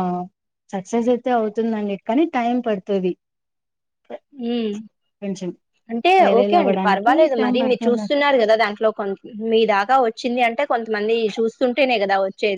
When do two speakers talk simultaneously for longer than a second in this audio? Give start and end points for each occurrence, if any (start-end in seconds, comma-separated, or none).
6.2-8.1